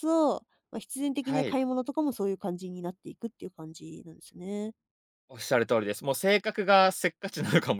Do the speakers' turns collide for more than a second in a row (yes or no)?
no